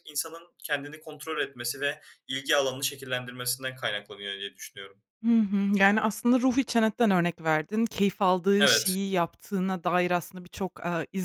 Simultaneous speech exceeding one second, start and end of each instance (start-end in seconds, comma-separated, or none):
none